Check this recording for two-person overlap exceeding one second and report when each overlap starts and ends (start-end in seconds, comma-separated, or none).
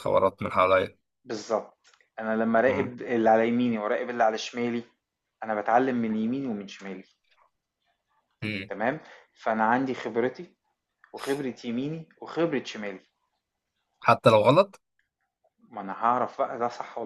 none